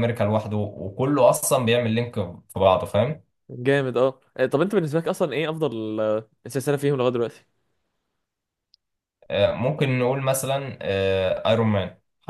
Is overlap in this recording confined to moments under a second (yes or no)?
yes